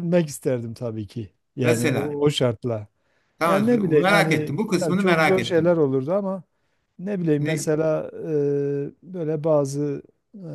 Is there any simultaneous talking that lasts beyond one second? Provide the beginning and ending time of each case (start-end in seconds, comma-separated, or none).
3.5-5.8